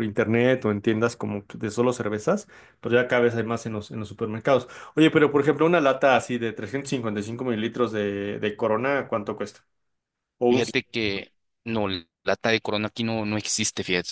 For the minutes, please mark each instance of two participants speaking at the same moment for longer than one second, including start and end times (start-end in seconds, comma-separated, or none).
none